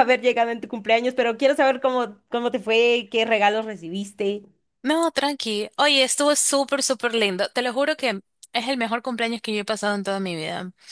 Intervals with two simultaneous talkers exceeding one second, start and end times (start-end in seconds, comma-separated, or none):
none